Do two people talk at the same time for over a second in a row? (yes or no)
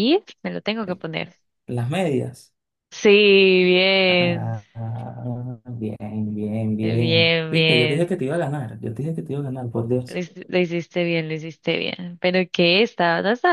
yes